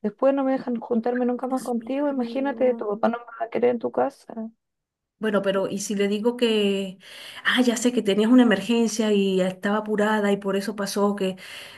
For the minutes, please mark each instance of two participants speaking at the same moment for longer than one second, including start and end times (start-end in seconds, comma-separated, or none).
1.5-2.9